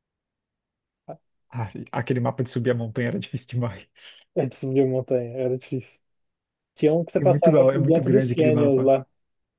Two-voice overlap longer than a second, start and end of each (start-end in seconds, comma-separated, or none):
7.2-8.9